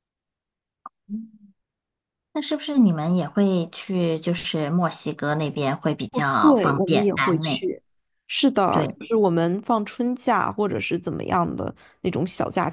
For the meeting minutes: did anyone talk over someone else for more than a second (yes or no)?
yes